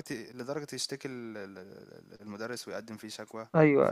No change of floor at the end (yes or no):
yes